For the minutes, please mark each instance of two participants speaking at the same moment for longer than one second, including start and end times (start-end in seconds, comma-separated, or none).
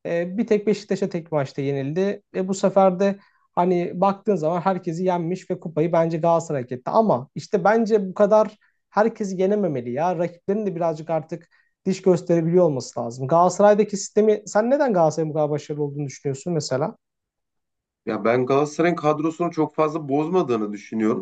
none